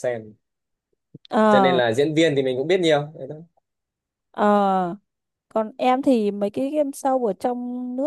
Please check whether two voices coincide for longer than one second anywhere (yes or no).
no